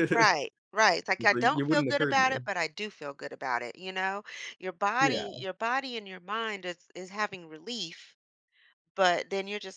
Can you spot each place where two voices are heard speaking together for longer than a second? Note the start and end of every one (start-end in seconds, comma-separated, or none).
1.2-2.4